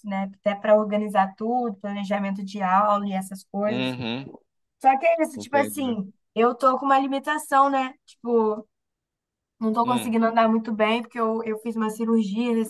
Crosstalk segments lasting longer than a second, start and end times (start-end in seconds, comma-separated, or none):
none